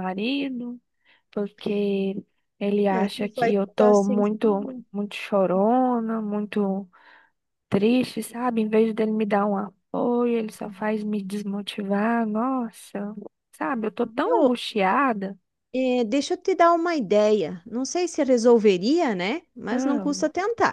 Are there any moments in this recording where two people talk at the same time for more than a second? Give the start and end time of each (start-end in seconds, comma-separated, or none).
2.9-4.8